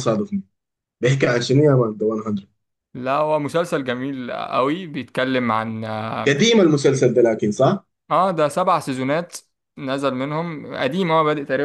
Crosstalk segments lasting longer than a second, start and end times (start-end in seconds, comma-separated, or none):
none